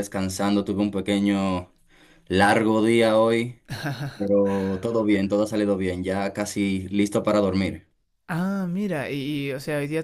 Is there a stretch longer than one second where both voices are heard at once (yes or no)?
no